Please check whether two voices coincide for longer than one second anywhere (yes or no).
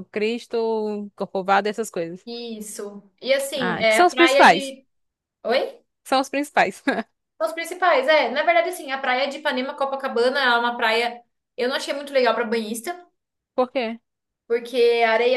yes